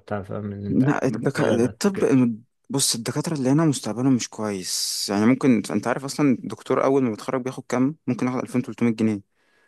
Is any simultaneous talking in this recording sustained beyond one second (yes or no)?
yes